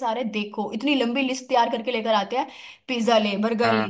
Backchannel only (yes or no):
yes